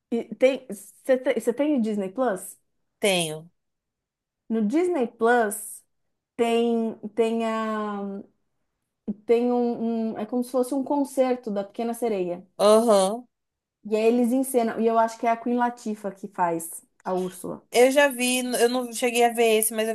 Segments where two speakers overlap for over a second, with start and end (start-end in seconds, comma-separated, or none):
none